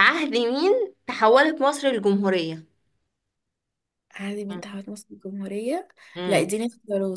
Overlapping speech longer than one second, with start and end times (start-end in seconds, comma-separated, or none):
none